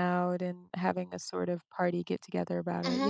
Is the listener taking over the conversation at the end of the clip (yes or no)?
yes